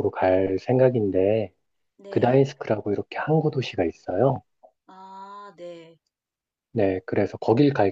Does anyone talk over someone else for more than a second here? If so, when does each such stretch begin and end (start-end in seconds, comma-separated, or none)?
none